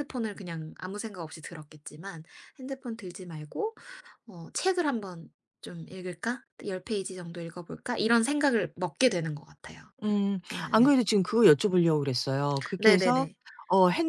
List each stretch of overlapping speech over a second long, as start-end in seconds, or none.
none